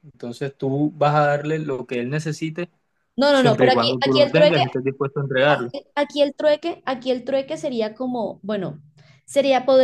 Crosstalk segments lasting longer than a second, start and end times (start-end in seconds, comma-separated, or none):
3.3-4.6